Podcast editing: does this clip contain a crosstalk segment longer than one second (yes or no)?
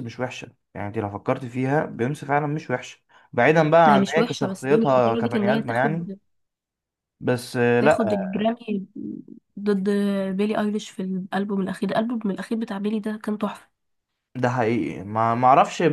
yes